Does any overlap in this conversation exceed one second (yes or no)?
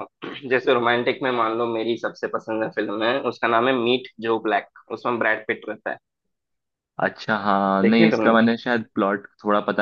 no